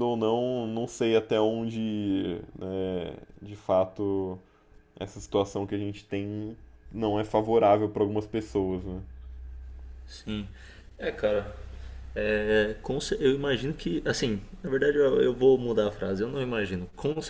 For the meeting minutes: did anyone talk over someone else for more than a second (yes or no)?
no